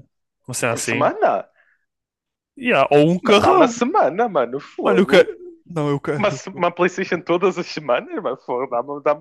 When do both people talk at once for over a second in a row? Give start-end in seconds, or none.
none